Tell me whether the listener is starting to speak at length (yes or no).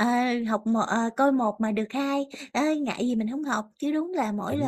no